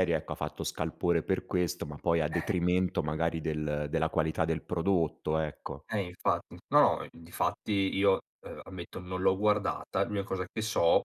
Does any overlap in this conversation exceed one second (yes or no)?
no